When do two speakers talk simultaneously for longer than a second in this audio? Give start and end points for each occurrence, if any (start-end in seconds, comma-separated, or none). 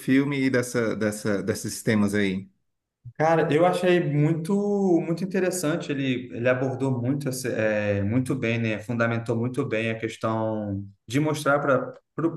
none